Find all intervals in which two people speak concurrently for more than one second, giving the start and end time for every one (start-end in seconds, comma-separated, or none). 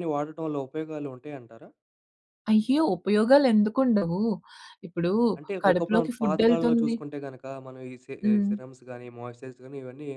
5.6-6.9